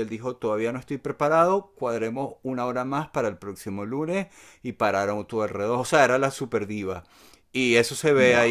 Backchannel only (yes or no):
yes